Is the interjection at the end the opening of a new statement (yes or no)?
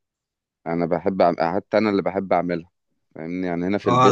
yes